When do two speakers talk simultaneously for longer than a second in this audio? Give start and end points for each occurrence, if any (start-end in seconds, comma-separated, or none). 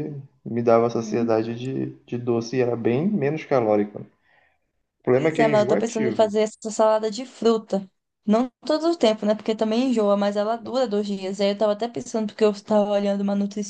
5.1-6.3